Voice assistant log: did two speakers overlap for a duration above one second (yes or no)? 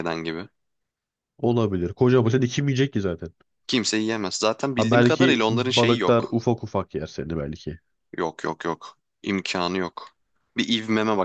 yes